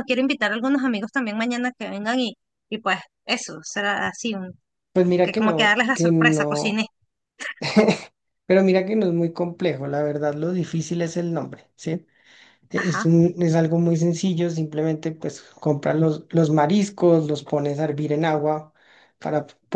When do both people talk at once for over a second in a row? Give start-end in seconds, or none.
5.2-6.8